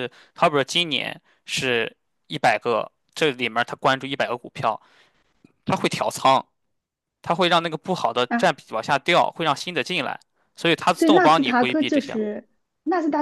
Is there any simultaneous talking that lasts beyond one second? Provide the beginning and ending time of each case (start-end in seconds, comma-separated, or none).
10.9-12.2